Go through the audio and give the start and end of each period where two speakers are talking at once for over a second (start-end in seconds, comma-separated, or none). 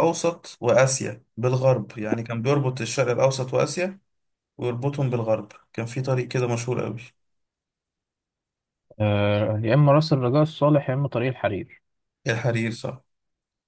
none